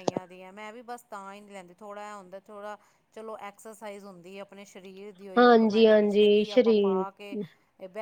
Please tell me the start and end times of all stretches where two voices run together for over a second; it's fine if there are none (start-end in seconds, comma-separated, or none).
5.4-7.0